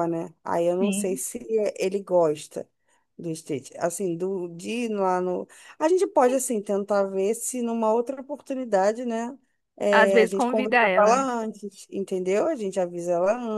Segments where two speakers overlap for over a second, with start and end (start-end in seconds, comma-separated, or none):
9.9-11.3